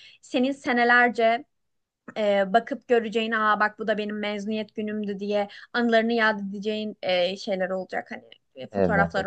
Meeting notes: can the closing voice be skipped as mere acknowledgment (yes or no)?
yes